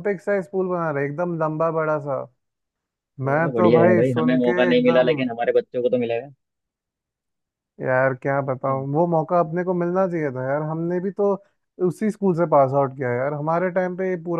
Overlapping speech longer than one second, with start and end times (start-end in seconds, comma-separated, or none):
3.3-5.2